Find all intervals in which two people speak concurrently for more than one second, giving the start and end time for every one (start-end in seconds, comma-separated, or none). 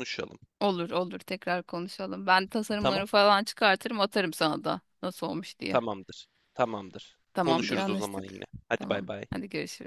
7.3-9.2